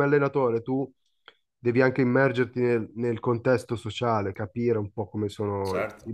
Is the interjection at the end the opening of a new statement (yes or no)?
no